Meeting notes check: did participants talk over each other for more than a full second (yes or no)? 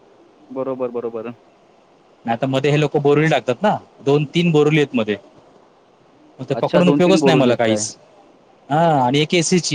yes